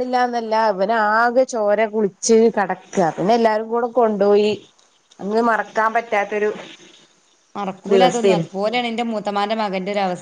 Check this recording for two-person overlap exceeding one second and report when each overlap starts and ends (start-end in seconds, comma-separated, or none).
none